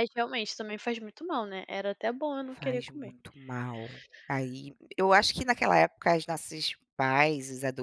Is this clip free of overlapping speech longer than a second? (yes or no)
yes